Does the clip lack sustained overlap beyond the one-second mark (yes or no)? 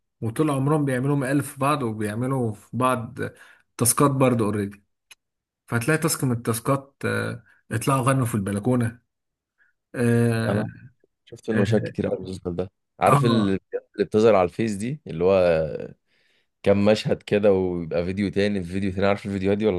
yes